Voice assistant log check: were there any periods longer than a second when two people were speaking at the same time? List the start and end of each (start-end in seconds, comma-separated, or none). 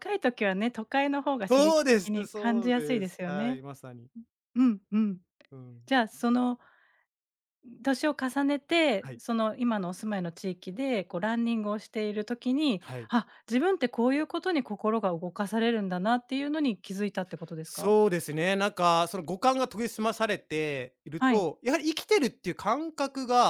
1.5-3.6